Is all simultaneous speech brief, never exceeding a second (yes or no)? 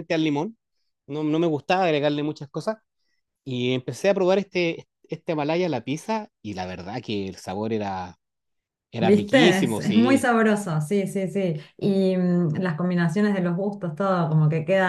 no